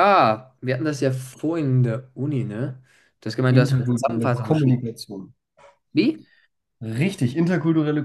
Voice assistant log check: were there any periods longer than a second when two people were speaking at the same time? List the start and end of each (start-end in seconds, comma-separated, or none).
3.5-4.8